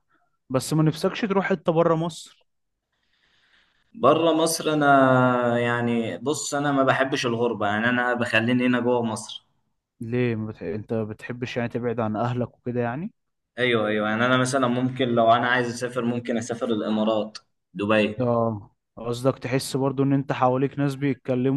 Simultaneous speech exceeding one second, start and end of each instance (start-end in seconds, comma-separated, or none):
none